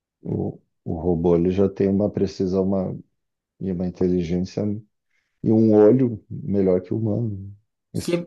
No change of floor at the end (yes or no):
no